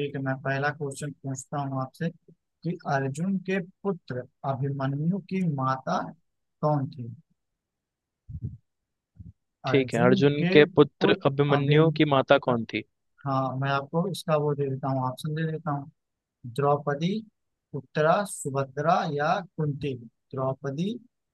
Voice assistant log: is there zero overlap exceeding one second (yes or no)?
no